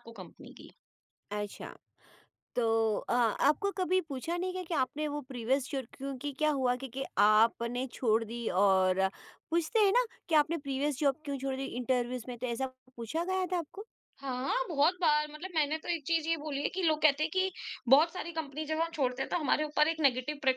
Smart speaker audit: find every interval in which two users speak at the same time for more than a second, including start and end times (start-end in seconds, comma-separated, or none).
none